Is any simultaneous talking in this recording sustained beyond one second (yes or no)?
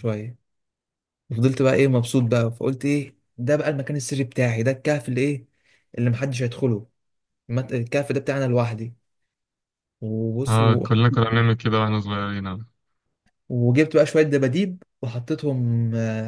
no